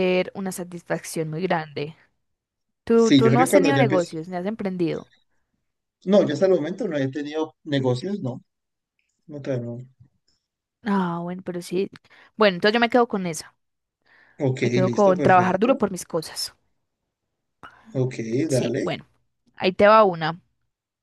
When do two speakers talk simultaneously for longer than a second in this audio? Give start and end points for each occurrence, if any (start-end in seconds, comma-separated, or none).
2.9-4.1, 14.6-15.9